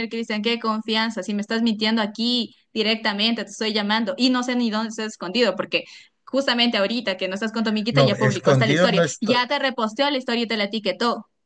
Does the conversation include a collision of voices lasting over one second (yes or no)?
yes